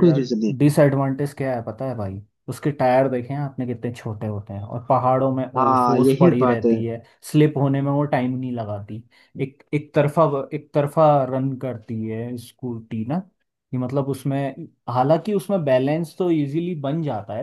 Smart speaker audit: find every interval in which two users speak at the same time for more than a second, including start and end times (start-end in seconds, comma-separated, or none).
5.6-6.8